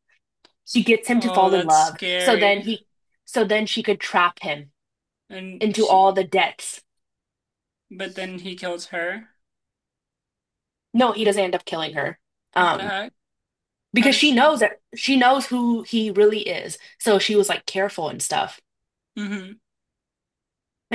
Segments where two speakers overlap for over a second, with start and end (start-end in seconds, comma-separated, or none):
1.1-2.7